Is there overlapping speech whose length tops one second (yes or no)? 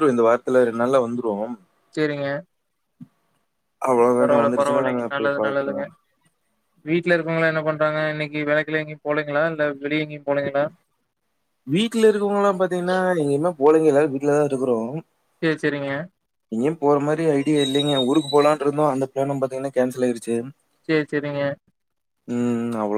yes